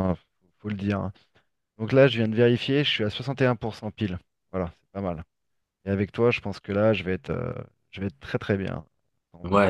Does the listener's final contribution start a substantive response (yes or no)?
yes